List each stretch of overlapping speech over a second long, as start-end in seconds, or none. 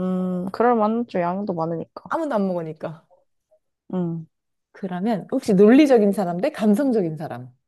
none